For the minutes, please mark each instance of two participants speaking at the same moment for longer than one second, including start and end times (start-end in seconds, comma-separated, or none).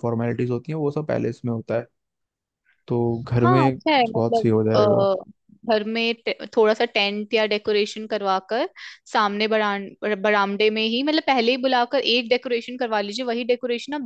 3.4-5.0